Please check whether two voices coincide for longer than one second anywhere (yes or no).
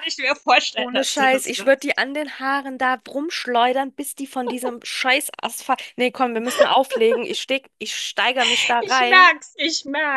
yes